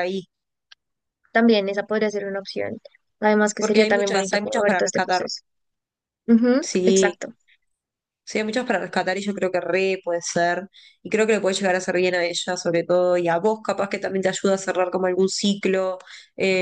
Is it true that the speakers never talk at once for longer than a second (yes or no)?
no